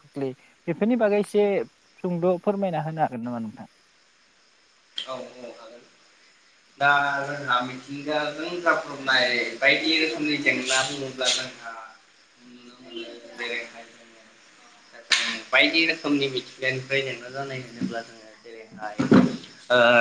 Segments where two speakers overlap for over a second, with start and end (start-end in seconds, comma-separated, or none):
none